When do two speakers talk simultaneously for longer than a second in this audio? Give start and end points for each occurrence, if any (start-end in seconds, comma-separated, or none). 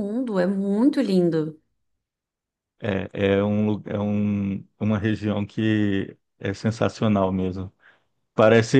none